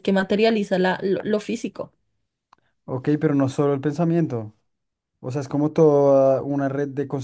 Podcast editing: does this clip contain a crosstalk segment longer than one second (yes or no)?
no